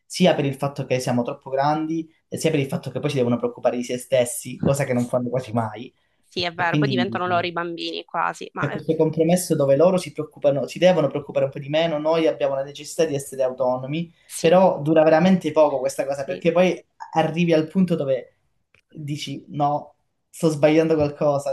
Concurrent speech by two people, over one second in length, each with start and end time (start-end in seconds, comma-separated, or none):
none